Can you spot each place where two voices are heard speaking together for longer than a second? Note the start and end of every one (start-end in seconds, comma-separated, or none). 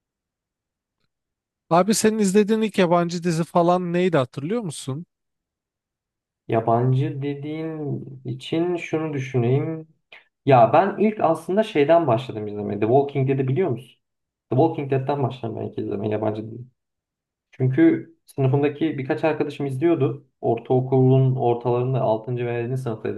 none